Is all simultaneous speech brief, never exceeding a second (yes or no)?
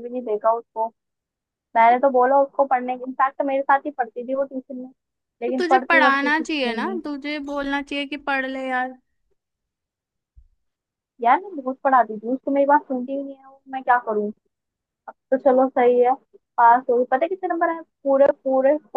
no